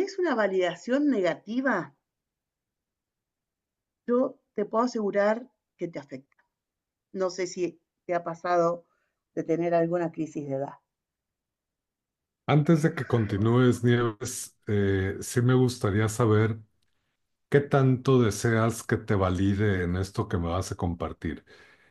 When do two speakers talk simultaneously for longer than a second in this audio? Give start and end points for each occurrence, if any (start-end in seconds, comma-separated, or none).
none